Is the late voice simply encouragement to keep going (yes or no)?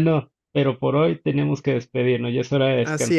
no